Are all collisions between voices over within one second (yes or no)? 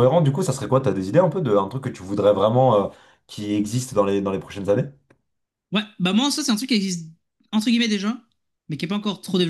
yes